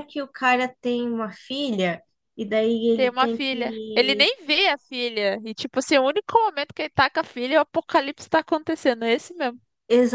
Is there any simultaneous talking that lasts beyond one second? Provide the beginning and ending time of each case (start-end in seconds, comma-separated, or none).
2.9-4.3